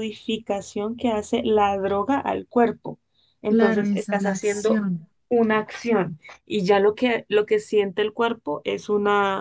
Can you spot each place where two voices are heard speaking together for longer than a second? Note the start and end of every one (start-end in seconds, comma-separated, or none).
3.5-4.8